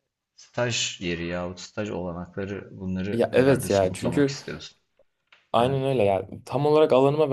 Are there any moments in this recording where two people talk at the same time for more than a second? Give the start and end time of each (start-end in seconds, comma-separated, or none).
3.1-4.3